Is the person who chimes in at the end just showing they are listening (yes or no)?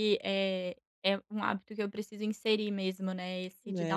no